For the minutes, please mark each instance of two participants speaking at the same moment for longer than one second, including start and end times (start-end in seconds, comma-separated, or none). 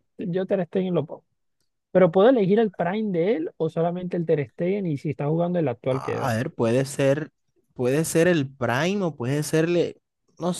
none